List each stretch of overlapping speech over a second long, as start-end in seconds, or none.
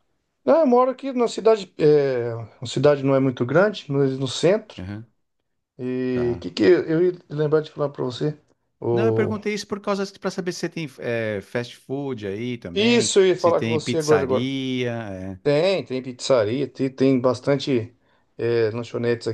12.7-14.5